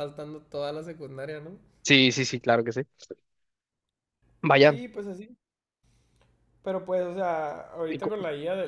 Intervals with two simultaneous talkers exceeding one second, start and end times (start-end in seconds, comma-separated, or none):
none